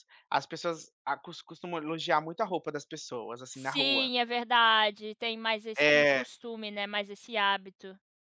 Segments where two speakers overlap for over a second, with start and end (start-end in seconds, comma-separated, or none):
none